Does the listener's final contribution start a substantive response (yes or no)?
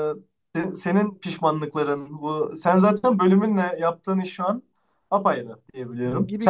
yes